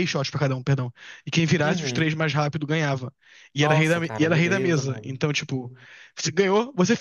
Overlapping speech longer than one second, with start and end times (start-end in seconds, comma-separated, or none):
3.5-5.2